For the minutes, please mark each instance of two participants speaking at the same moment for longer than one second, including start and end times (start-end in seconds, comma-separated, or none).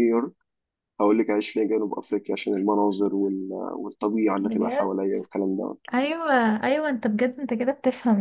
none